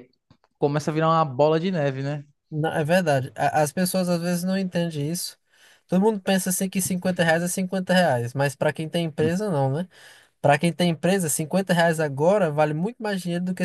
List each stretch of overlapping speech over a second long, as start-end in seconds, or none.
none